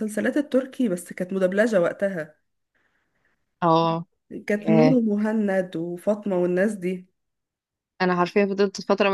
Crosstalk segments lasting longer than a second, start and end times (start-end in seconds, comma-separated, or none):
none